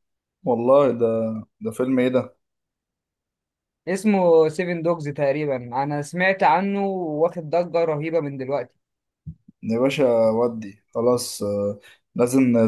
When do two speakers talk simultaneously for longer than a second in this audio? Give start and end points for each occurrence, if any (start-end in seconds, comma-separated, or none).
none